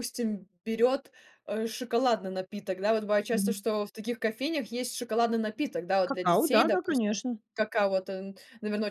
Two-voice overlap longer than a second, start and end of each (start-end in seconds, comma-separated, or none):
6.1-7.4